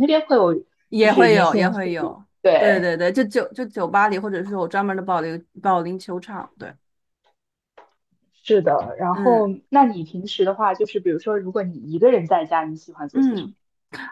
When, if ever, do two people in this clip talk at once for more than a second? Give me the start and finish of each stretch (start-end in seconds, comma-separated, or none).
1.0-2.9